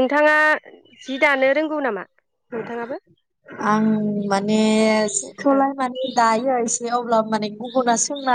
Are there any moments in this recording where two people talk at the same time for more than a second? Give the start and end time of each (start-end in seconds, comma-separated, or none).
none